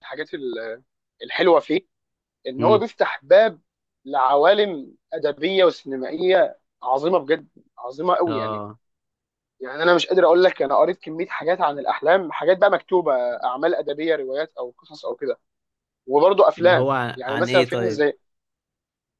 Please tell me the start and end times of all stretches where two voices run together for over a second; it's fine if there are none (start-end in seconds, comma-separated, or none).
16.6-18.0